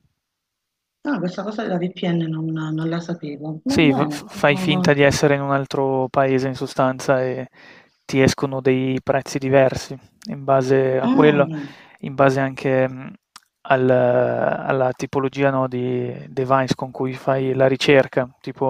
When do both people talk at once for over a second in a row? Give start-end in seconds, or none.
3.6-4.9